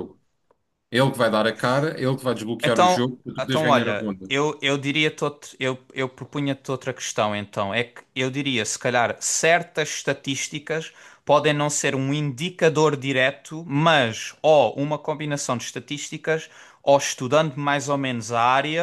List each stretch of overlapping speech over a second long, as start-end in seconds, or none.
2.6-4.3